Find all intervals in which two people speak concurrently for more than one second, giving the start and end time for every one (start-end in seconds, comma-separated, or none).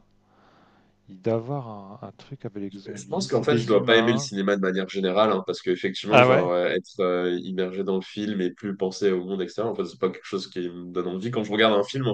2.9-4.3